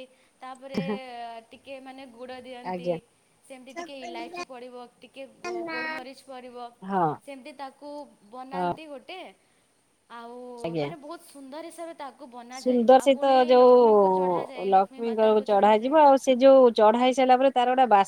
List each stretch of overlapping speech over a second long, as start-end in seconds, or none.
12.6-15.9